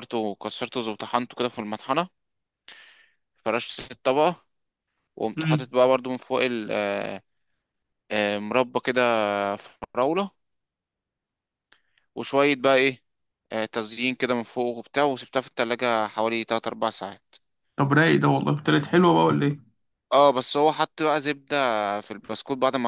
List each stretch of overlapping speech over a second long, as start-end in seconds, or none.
none